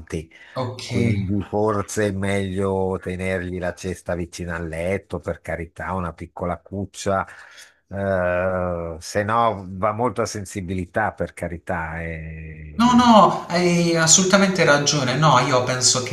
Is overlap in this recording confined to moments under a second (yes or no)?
yes